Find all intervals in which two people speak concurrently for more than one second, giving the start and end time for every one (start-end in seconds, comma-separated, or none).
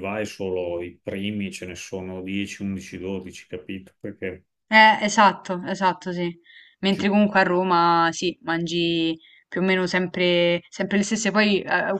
none